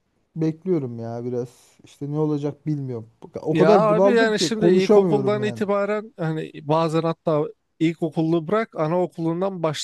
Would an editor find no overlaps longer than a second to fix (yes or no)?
no